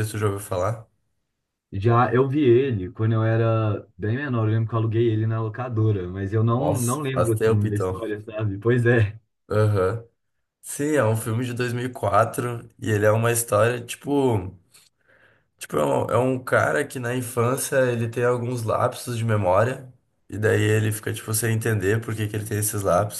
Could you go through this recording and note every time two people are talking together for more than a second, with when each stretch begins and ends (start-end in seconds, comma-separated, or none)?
6.6-8.0